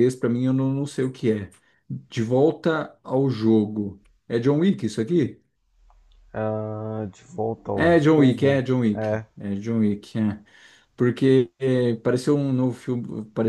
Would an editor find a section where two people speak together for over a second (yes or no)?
yes